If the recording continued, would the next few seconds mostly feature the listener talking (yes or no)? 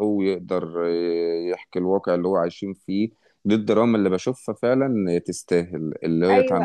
no